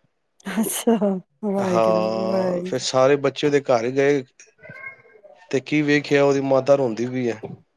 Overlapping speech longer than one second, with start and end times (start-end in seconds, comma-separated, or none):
1.7-2.9